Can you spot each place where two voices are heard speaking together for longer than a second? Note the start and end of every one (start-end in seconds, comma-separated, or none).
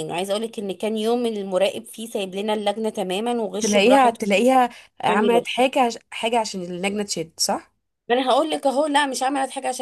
none